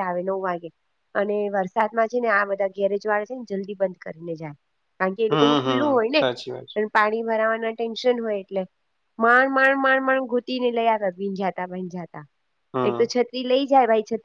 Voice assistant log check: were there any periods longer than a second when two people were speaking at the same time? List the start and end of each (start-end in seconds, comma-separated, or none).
5.3-6.8